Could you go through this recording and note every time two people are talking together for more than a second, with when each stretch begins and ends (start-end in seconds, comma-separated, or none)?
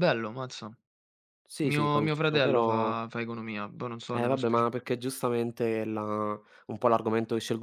1.6-3.0